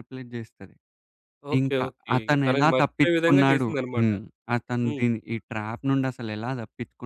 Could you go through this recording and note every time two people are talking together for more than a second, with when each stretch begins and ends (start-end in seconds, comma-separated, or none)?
1.6-4.1